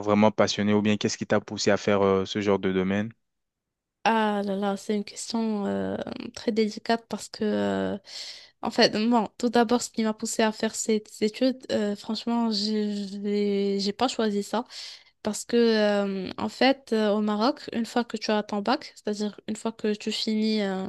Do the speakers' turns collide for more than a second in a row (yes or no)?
no